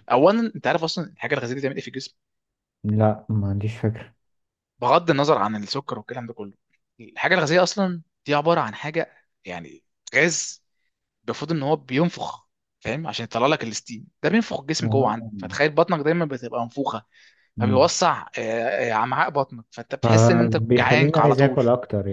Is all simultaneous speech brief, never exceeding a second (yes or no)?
no